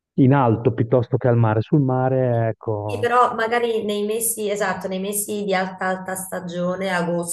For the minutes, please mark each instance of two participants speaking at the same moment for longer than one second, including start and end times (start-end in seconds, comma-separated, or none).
none